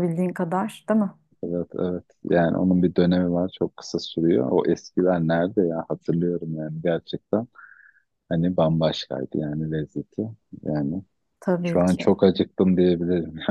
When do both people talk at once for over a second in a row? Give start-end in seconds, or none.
none